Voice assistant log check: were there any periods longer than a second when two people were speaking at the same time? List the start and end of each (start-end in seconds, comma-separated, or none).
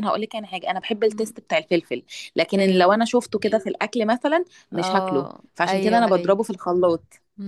4.8-6.4